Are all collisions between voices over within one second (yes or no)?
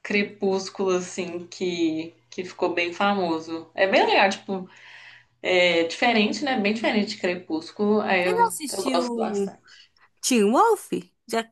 no